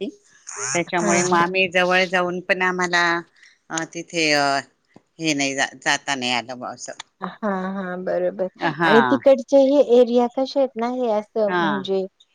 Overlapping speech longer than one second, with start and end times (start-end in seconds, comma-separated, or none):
none